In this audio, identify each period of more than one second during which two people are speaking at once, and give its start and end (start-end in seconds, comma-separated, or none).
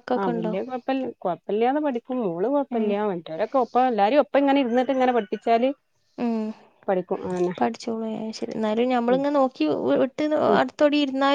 none